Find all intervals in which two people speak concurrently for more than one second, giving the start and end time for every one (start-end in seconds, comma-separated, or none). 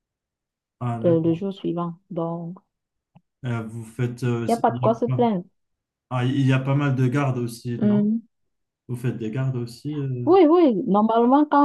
none